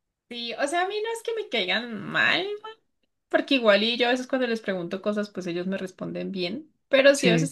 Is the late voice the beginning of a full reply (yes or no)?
no